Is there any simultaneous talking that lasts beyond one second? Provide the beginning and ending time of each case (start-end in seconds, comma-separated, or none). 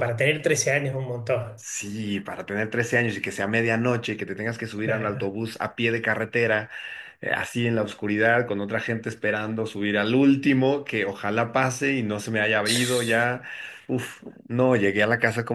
none